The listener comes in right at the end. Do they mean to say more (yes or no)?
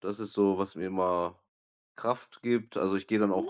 no